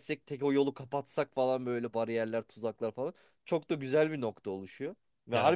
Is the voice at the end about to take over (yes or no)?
no